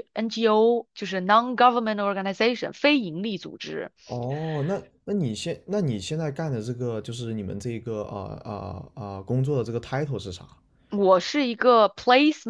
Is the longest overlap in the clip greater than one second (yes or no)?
no